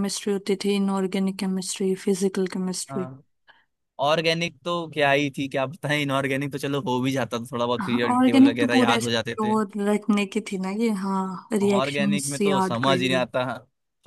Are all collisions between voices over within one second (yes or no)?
no